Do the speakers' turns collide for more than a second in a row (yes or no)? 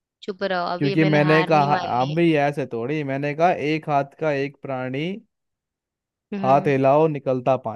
yes